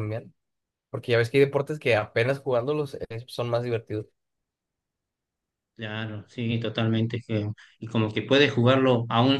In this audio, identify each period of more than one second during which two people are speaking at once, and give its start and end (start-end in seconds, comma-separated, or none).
none